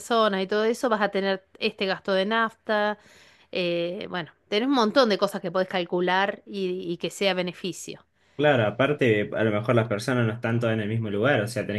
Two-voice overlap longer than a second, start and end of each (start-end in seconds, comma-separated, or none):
none